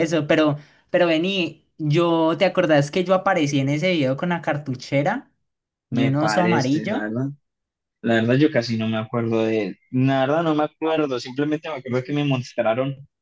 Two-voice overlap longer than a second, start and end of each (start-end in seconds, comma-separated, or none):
5.9-7.1